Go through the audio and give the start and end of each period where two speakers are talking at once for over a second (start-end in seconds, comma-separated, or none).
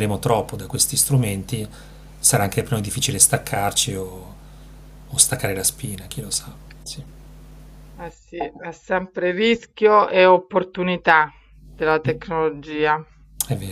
none